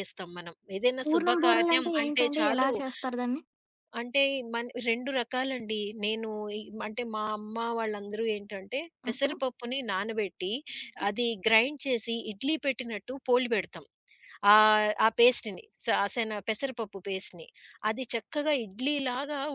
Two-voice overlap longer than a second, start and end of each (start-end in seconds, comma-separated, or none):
1.0-2.7